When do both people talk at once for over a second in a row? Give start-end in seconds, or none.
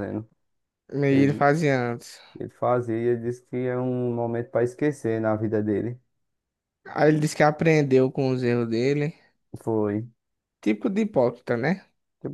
none